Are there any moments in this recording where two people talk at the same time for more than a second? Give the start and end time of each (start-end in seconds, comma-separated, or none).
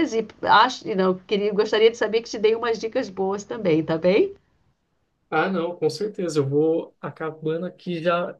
none